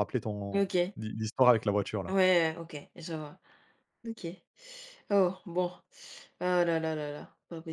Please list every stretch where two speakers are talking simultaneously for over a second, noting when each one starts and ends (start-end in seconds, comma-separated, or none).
none